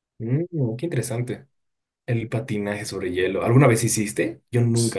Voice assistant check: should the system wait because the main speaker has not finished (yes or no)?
no